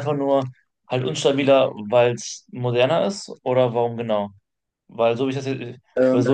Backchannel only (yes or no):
yes